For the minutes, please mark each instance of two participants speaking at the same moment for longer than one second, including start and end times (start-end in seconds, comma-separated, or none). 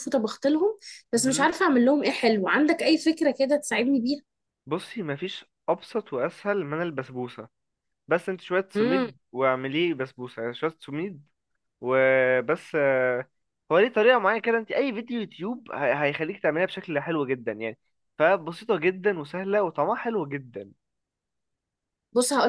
none